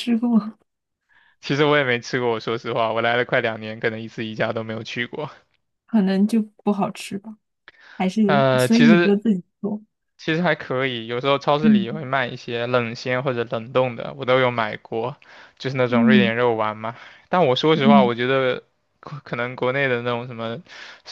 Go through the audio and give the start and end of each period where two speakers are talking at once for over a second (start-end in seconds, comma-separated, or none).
none